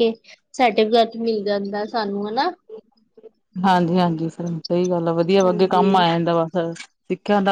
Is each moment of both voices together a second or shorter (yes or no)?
yes